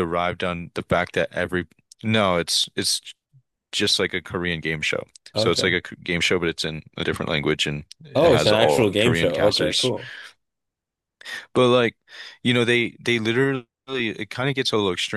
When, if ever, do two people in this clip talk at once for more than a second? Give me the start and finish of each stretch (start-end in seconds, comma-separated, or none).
8.2-9.9